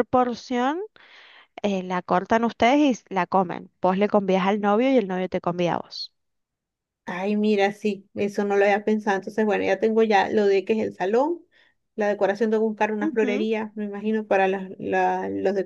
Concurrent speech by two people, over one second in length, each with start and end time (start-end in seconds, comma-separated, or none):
none